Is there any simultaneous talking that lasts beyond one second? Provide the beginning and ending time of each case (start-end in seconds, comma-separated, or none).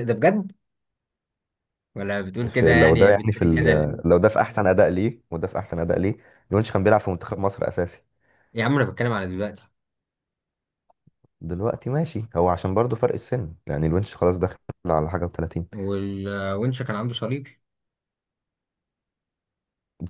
2.5-3.9